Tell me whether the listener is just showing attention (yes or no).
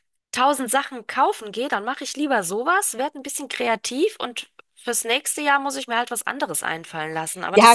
no